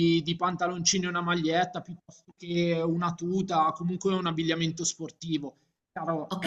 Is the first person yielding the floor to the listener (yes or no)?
yes